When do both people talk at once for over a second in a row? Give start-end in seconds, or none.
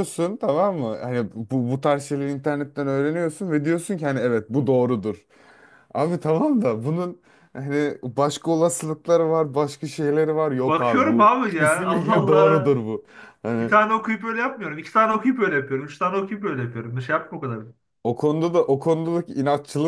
10.7-12.8